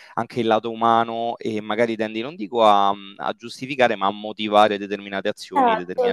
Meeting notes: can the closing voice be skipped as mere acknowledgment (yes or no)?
no